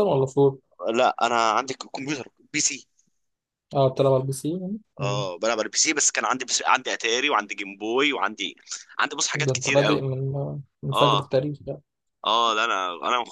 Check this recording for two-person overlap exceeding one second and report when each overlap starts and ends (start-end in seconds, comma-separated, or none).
none